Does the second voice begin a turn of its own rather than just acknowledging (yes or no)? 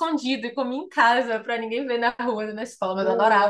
yes